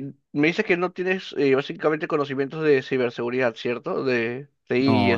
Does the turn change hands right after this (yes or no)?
yes